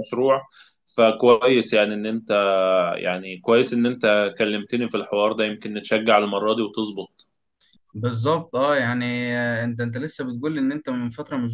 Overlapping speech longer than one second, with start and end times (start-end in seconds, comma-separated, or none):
none